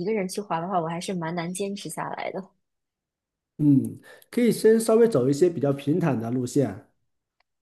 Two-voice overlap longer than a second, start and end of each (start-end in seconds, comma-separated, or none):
none